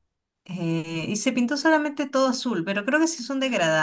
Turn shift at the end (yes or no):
no